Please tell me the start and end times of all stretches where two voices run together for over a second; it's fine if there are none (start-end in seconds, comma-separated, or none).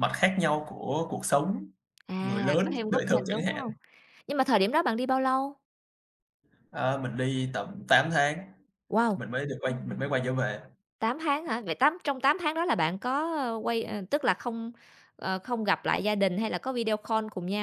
2.2-3.6